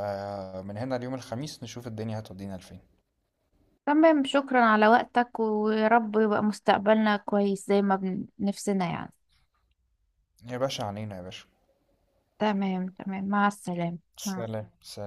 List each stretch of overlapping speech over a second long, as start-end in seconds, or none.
none